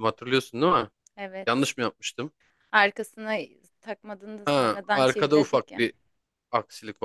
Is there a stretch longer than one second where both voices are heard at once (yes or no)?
yes